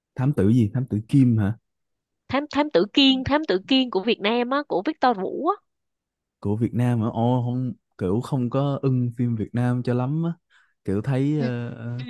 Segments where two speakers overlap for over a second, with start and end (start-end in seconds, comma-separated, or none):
none